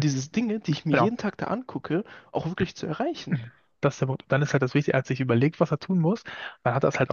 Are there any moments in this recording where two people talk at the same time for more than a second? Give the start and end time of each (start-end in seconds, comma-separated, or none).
none